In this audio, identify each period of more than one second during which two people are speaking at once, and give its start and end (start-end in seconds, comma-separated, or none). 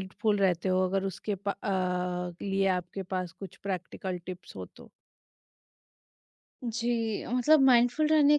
none